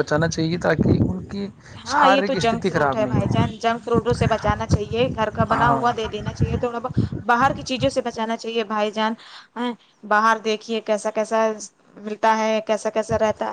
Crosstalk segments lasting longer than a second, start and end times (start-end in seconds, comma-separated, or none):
1.9-3.4